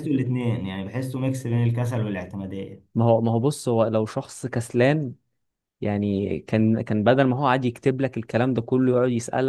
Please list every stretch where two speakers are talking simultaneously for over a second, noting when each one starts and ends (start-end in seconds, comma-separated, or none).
none